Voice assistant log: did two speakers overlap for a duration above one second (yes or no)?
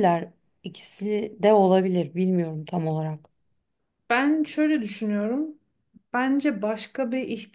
no